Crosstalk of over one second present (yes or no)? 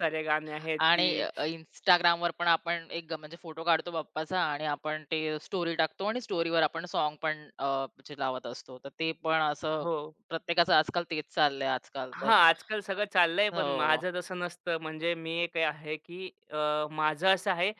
no